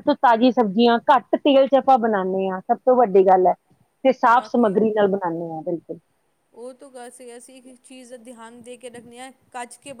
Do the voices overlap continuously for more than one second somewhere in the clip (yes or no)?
no